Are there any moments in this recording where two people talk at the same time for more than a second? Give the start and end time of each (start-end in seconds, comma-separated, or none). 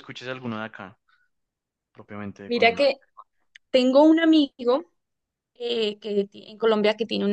none